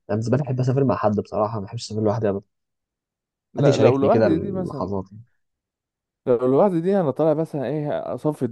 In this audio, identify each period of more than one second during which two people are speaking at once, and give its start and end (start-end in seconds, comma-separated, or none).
3.6-5.0